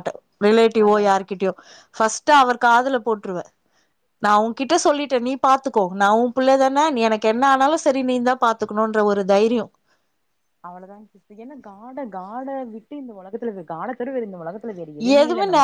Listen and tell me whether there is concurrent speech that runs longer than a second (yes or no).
no